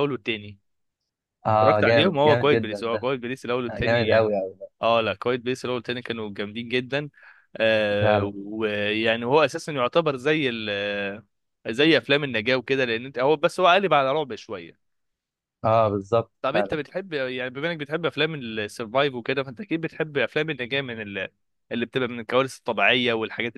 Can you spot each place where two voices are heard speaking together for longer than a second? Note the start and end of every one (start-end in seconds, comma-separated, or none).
1.6-3.1